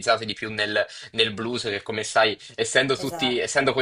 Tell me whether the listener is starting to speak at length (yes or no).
no